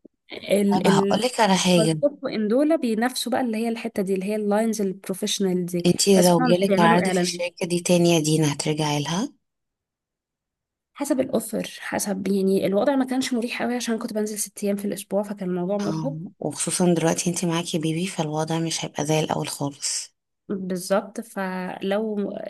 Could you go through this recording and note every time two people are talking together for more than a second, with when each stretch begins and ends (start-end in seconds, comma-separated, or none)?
5.8-7.4